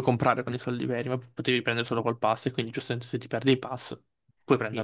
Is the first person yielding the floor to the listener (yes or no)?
yes